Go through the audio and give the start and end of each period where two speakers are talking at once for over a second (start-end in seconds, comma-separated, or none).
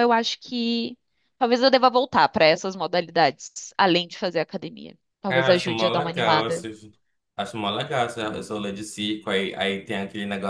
5.3-6.7